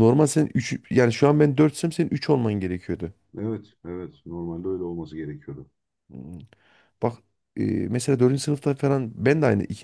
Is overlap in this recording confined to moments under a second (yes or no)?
yes